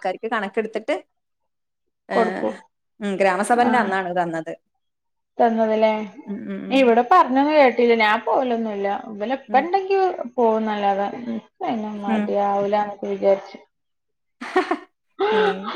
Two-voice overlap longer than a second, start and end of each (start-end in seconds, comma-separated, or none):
none